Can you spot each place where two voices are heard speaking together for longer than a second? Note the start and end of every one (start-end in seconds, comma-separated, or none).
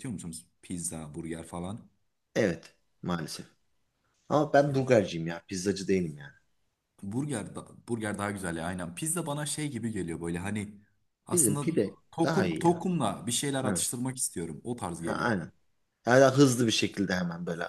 11.3-12.8